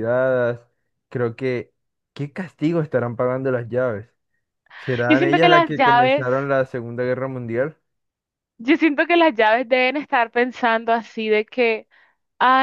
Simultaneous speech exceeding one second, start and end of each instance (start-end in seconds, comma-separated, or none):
5.1-6.3